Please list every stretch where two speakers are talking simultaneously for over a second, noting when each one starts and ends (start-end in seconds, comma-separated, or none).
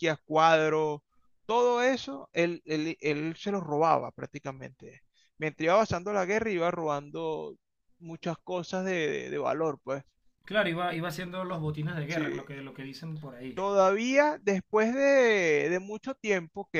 none